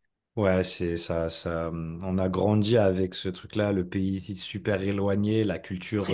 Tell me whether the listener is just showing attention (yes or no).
yes